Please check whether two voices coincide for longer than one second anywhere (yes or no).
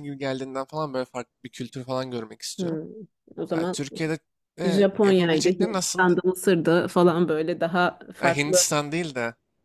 yes